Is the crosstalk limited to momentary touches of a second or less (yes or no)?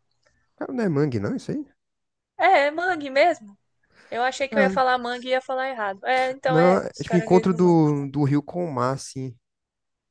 no